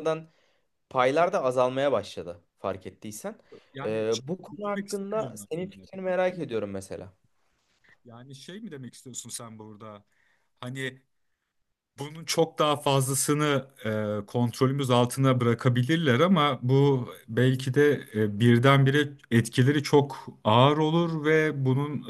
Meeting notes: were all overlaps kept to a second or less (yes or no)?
no